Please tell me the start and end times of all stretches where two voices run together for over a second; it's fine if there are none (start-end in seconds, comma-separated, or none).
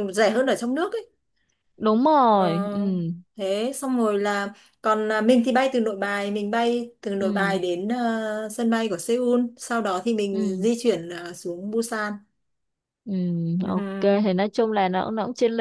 none